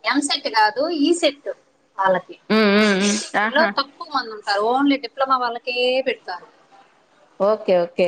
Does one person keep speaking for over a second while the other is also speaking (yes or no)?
no